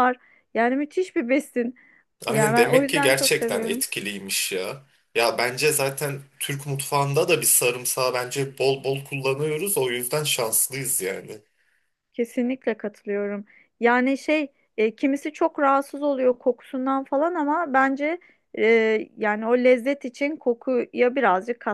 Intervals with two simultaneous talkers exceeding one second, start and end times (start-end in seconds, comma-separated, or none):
2.3-3.8